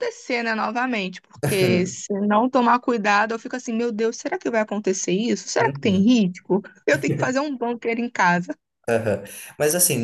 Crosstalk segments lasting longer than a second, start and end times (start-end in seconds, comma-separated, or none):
none